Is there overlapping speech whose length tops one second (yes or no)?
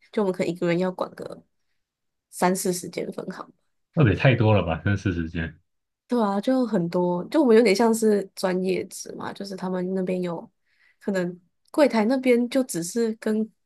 no